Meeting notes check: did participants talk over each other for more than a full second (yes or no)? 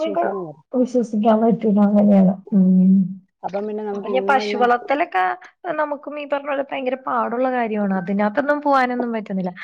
no